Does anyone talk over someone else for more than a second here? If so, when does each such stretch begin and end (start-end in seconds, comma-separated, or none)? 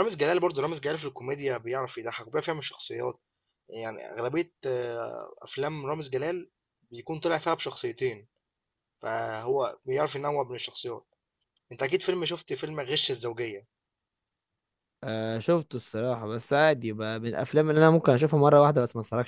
none